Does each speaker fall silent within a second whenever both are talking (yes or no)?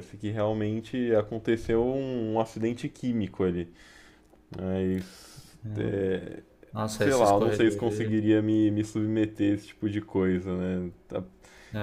no